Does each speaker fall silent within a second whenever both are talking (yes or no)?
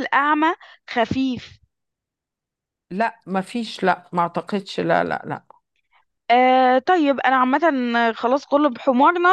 yes